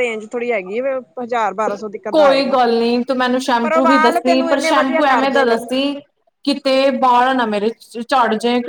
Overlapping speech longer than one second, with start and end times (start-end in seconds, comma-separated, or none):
3.6-5.7